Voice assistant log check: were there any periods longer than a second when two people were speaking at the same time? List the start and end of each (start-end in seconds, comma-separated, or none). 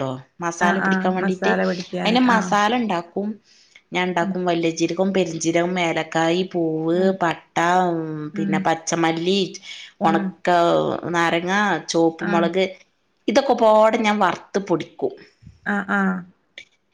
0.7-2.5